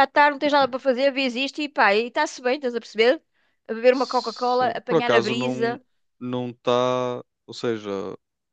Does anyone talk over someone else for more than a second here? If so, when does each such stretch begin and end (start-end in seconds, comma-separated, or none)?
3.9-5.8